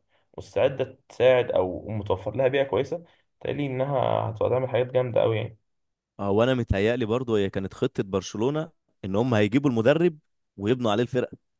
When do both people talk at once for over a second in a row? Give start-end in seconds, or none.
none